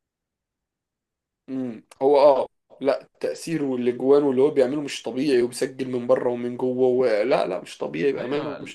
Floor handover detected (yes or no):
yes